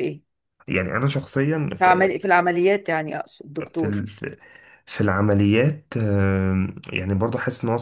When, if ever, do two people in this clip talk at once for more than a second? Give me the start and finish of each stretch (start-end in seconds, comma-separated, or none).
none